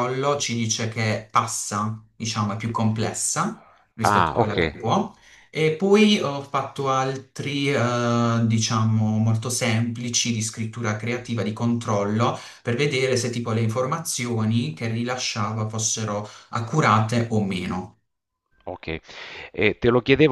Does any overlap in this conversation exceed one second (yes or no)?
no